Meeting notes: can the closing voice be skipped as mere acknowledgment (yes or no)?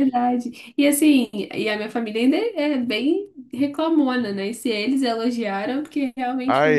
no